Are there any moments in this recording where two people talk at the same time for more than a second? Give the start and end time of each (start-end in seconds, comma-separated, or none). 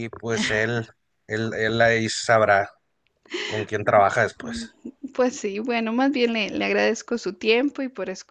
none